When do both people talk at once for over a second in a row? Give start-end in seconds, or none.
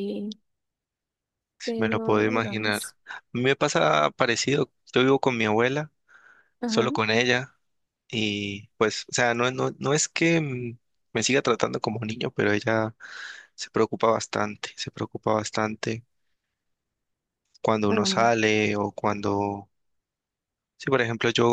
1.6-3.0